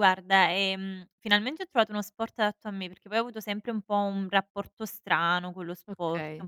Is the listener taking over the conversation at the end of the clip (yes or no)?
no